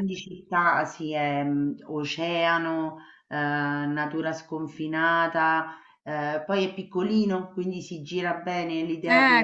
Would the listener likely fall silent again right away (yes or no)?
yes